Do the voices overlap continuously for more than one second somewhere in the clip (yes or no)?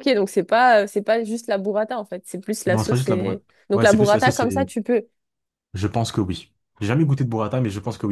yes